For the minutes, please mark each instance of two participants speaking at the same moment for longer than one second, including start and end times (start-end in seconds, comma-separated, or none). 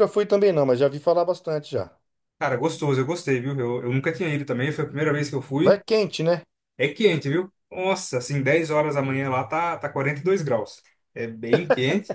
none